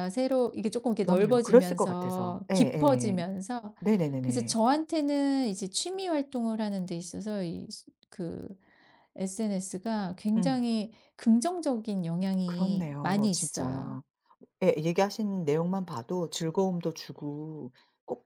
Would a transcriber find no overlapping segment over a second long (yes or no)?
no